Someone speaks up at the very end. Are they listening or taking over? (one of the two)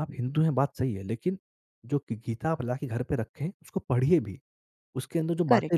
listening